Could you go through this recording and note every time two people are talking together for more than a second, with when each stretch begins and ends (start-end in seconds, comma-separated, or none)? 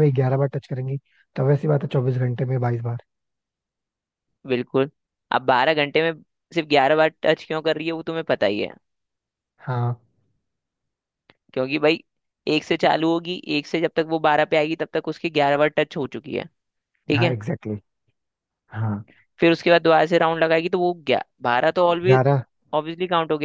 none